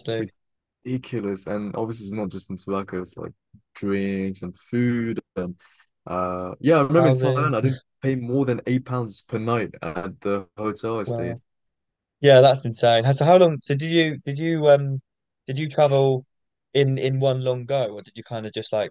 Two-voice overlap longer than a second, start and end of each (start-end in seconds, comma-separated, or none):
none